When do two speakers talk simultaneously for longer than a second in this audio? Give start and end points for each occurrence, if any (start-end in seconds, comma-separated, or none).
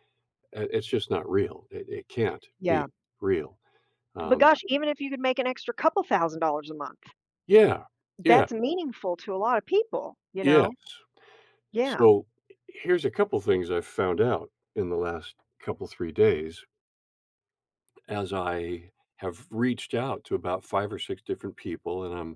none